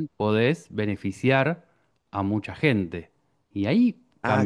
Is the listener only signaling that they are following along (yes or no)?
no